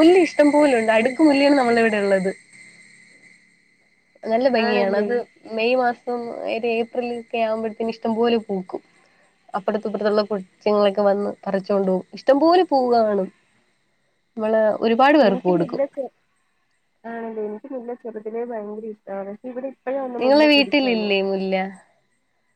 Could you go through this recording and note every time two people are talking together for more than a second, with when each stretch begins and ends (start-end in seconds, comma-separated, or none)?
none